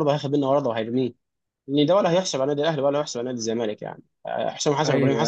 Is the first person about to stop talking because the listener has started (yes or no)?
no